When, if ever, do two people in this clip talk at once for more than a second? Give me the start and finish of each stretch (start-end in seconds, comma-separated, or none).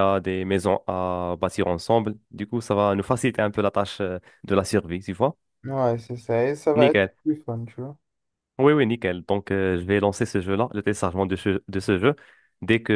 none